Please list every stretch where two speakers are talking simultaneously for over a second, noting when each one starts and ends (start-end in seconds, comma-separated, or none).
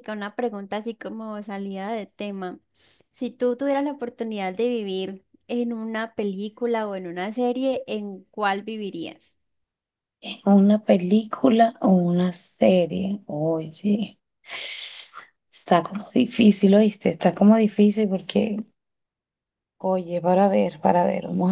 none